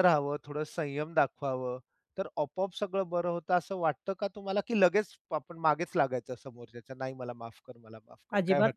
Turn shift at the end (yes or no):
yes